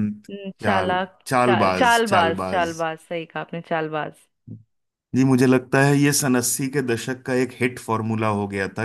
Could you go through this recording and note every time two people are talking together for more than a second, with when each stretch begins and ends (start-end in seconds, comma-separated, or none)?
0.6-2.7